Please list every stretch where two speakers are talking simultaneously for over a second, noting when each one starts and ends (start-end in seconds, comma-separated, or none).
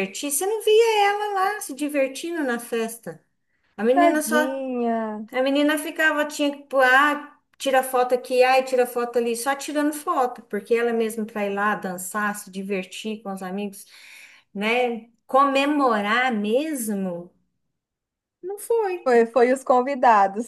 none